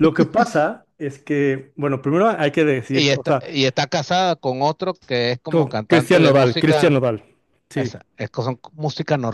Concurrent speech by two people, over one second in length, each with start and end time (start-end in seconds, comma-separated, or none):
5.5-7.0